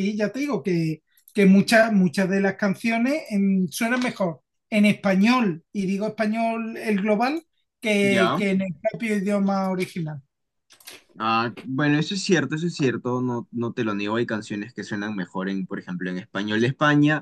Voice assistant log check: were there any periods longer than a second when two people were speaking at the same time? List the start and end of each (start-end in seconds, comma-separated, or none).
none